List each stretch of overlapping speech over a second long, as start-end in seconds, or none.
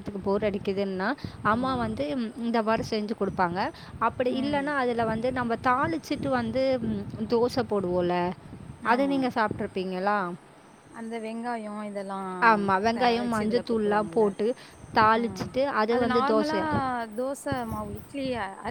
12.9-14.3